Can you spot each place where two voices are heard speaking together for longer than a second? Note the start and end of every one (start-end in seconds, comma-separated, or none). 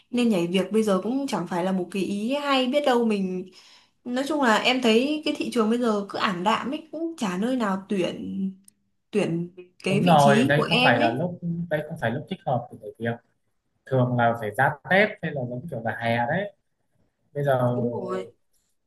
9.9-11.2